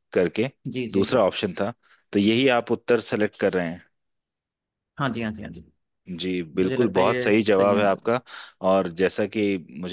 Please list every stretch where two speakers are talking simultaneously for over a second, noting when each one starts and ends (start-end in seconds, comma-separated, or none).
6.6-8.1